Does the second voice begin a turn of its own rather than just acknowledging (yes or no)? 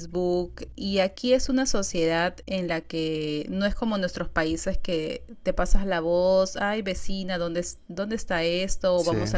no